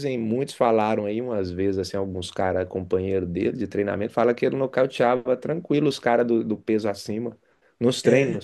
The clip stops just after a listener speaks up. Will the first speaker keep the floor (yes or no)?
no